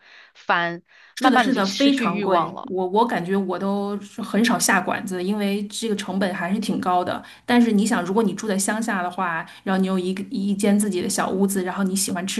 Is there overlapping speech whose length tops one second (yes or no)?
yes